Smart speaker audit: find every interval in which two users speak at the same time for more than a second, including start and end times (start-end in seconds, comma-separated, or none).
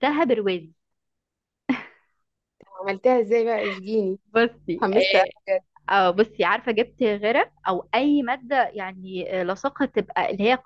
none